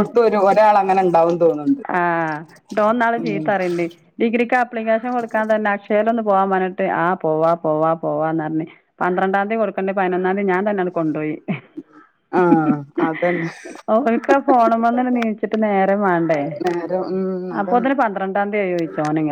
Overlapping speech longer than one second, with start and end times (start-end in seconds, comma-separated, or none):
none